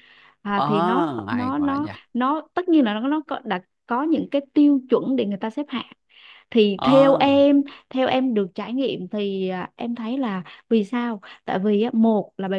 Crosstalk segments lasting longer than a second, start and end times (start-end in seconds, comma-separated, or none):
0.6-1.9